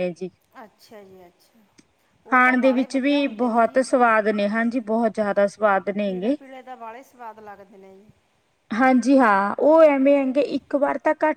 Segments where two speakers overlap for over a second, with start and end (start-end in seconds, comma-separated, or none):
2.3-3.8